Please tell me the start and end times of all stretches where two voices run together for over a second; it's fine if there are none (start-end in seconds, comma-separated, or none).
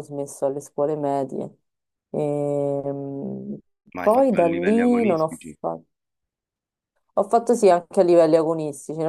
4.0-5.6